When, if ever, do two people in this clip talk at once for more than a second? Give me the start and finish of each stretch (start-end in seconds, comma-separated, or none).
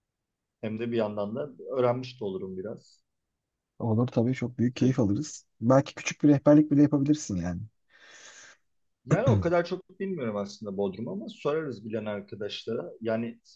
none